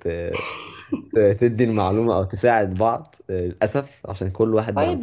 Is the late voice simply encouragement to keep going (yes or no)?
yes